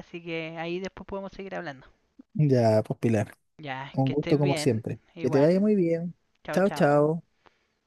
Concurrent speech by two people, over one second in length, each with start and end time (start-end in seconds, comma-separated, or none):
3.9-5.7